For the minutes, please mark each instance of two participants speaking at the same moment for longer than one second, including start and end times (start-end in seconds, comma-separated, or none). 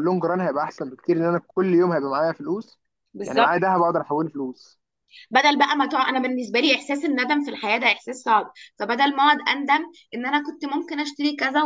none